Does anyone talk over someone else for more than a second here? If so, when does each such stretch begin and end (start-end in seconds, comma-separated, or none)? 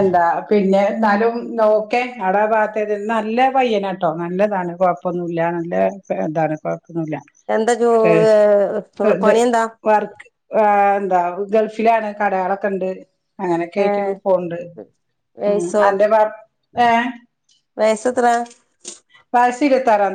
none